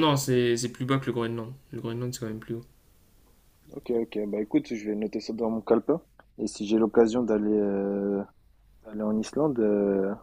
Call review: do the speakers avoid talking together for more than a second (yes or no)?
yes